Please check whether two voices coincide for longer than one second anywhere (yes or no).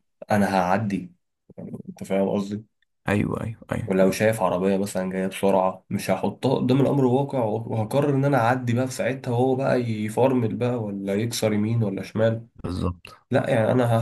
no